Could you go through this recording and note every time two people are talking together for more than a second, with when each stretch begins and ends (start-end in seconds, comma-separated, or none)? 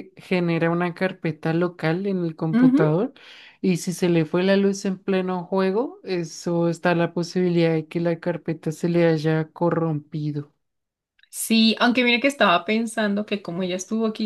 none